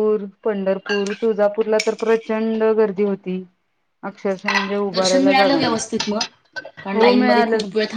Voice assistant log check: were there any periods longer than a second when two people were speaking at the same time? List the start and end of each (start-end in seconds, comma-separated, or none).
4.9-6.2